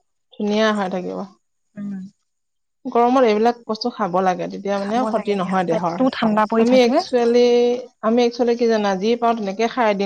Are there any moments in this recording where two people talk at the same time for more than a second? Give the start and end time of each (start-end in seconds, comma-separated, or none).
4.8-6.9